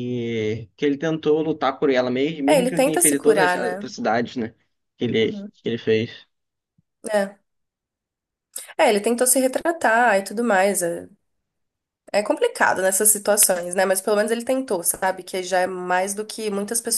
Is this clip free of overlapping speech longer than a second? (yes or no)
no